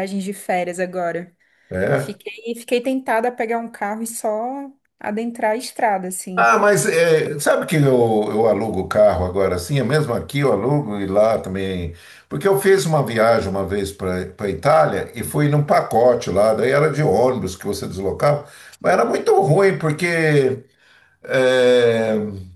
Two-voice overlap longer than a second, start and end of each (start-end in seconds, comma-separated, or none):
none